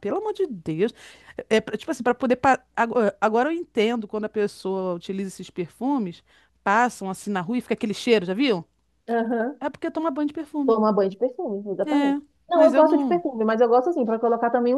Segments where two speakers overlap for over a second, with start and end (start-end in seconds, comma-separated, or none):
11.9-13.2